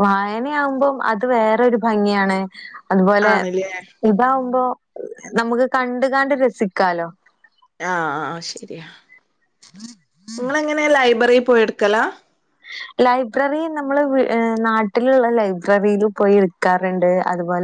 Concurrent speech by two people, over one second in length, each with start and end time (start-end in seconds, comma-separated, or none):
none